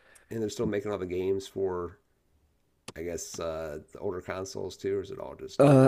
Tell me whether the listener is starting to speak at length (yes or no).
yes